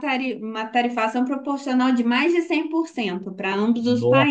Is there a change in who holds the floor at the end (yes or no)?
yes